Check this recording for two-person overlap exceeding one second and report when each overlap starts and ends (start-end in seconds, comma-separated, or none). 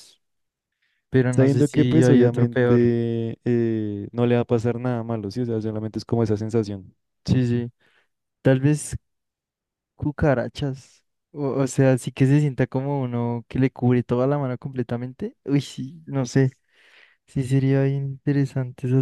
1.3-2.8